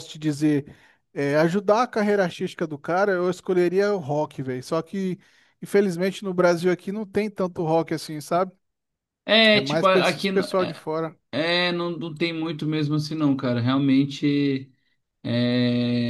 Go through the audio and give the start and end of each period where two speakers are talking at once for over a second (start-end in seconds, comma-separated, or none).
9.5-10.8